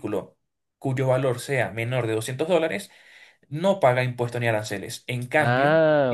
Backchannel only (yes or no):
yes